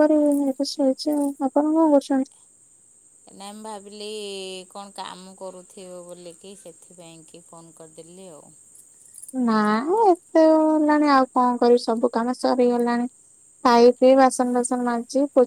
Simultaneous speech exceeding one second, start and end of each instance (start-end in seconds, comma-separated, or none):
none